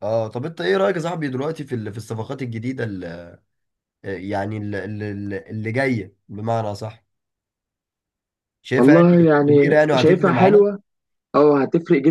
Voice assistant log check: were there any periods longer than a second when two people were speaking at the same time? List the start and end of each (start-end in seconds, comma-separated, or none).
8.8-10.7